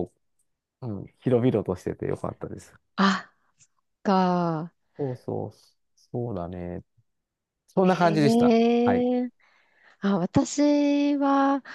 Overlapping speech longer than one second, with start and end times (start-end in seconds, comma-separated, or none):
7.8-9.1